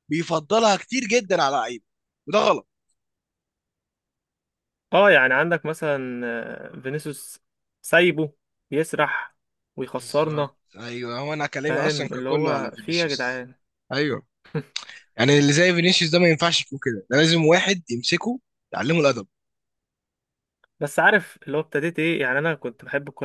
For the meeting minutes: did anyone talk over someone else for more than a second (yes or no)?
yes